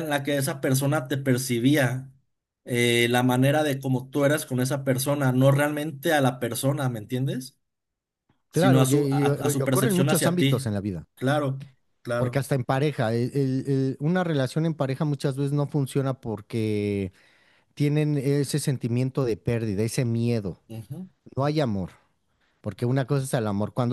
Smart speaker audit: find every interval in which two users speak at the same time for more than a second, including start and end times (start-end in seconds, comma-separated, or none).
8.5-10.7